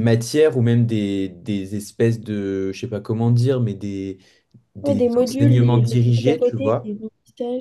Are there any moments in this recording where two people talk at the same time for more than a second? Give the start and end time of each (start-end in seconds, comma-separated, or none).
4.8-6.9